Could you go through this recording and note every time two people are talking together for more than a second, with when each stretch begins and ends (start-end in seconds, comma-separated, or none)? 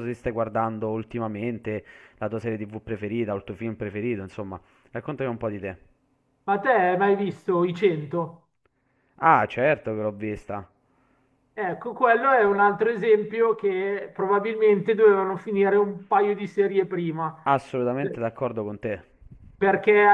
none